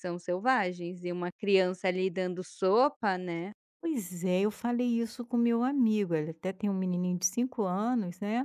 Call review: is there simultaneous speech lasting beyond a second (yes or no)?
no